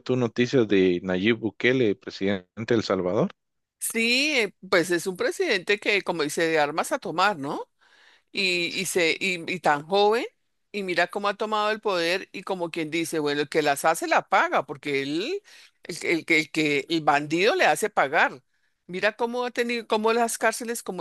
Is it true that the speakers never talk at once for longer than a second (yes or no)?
yes